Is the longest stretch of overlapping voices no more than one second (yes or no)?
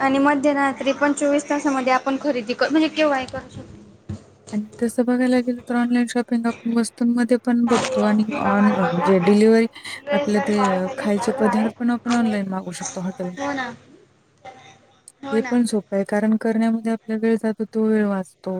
yes